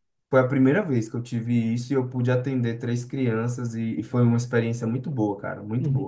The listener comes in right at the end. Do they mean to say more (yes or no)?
yes